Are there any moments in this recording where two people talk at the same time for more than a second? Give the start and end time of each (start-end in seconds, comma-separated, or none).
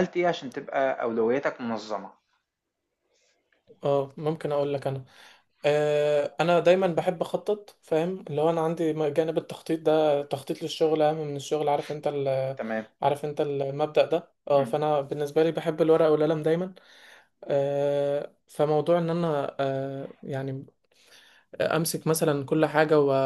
none